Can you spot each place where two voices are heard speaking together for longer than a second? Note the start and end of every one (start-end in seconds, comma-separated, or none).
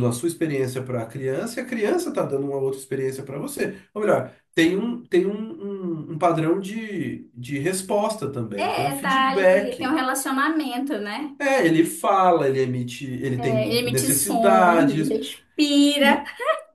8.6-10.0, 13.4-15.1